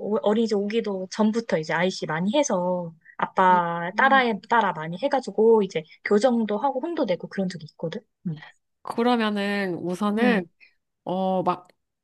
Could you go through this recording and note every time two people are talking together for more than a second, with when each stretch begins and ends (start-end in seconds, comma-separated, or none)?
none